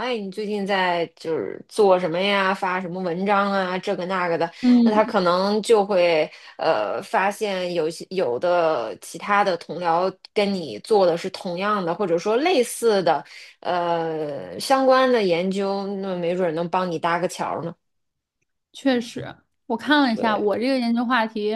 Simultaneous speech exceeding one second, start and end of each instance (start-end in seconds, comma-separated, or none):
none